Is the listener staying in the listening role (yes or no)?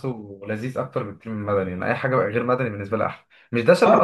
yes